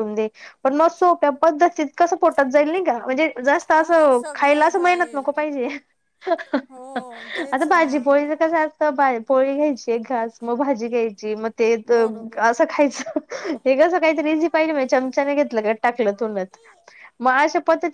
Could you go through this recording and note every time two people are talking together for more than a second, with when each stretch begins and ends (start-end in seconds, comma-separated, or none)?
3.8-5.2